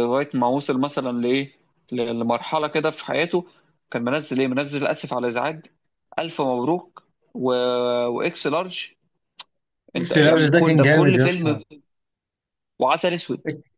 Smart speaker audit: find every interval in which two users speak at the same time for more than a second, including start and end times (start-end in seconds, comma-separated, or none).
10.0-11.6